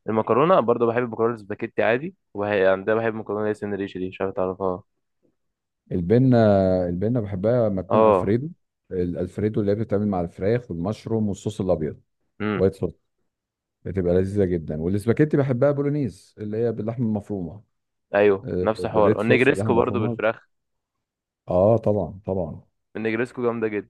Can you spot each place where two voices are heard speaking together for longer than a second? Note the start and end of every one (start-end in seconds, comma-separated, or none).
18.4-20.2